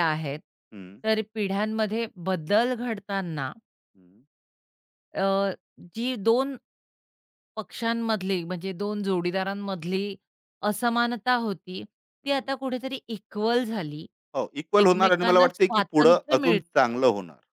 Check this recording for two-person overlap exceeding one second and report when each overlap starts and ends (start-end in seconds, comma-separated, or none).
14.8-16.6